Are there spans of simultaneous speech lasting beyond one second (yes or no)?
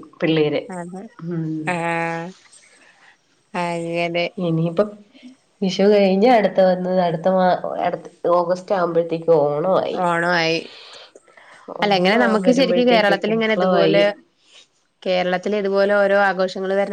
yes